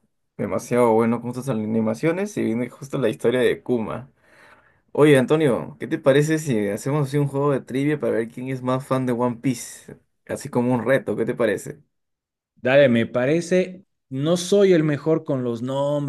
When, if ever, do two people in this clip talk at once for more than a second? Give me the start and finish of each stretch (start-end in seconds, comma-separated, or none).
none